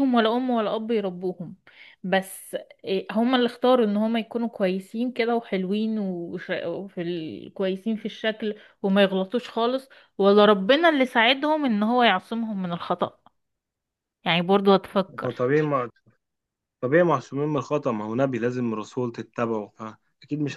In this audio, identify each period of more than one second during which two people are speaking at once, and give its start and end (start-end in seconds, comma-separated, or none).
none